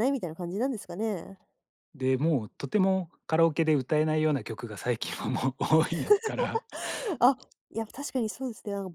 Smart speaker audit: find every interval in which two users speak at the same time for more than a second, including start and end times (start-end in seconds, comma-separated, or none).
none